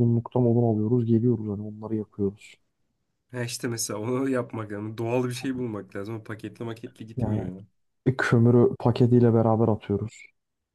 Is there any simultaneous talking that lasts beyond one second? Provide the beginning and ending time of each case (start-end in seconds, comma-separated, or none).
none